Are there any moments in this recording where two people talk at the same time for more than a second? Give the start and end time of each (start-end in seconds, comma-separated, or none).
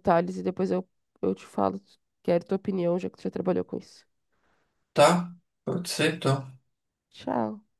none